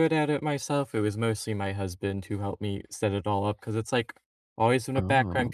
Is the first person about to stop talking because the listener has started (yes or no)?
no